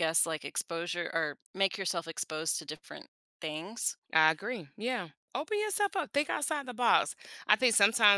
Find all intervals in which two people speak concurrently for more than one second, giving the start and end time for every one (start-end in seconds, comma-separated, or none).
none